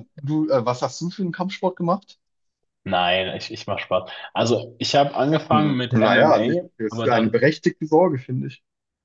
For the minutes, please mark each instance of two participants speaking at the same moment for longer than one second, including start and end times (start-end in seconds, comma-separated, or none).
5.5-7.4